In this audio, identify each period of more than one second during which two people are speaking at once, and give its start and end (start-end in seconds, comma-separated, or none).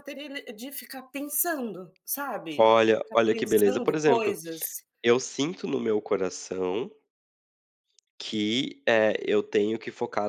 2.6-4.4